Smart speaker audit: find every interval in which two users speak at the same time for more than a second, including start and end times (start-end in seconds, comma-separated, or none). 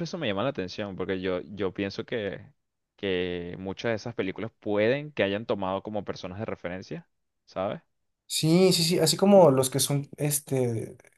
none